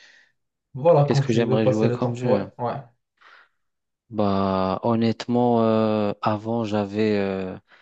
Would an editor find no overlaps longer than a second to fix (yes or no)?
no